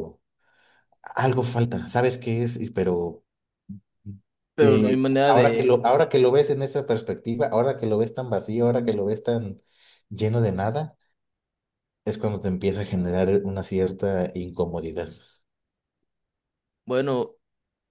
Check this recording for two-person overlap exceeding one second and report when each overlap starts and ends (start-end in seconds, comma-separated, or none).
4.6-6.0